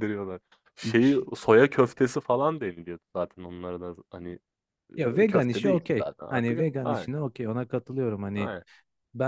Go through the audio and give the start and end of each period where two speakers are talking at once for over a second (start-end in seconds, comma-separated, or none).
5.0-7.1